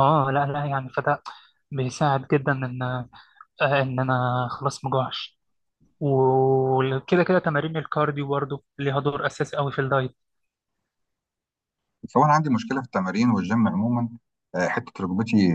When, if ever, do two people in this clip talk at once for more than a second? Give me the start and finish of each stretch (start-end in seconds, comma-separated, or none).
none